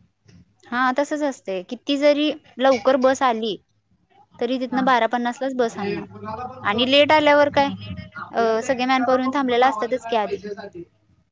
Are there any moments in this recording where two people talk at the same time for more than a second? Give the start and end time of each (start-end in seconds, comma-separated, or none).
8.4-10.4